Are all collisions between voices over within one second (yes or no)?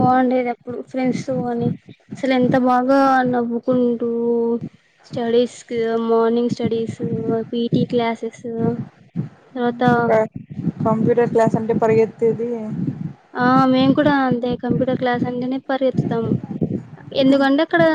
yes